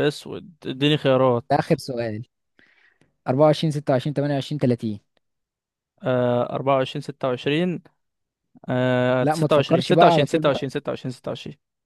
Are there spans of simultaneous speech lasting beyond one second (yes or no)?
yes